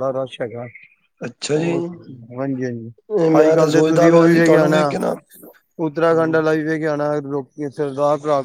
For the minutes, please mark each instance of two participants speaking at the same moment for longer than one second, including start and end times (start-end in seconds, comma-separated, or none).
3.4-4.8